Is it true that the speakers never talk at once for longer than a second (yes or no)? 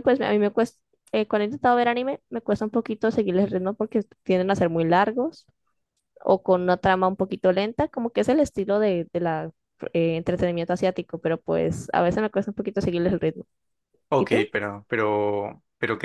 yes